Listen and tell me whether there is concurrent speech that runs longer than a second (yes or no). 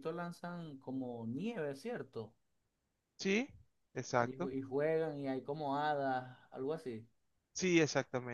no